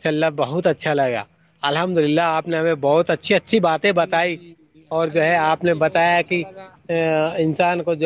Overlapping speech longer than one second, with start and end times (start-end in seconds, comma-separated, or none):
5.0-6.4